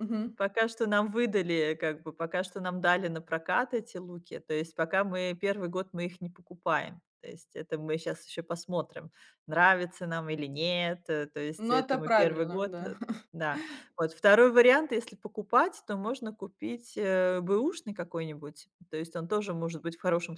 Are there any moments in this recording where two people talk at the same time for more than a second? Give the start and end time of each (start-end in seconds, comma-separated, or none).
11.6-12.9